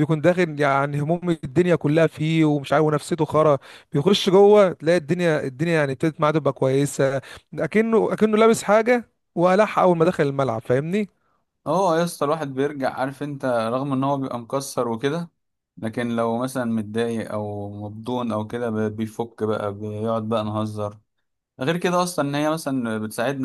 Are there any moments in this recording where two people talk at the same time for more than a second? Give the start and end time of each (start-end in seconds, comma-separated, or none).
none